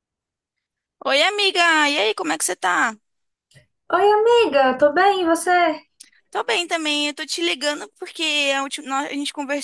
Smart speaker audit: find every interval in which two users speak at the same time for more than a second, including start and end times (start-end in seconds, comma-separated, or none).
none